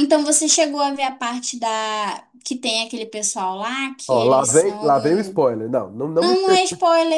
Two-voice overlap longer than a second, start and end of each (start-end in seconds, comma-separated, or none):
4.1-5.4